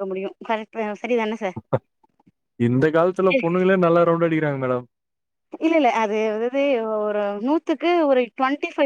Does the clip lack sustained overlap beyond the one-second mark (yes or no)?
yes